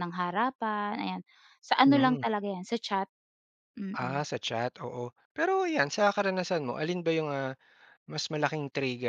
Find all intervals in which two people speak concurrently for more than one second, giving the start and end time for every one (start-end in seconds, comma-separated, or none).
none